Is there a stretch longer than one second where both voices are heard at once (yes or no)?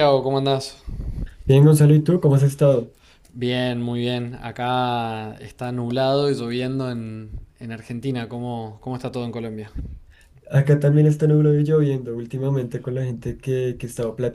no